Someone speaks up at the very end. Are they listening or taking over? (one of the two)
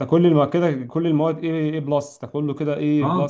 listening